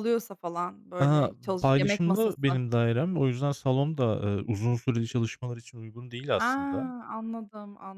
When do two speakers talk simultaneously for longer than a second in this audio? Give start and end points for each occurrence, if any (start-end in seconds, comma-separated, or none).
1.0-2.6